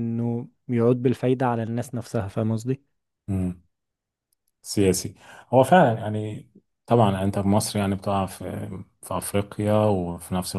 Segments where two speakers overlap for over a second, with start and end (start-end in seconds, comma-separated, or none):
none